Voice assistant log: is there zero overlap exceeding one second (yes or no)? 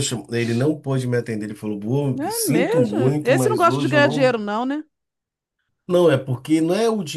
no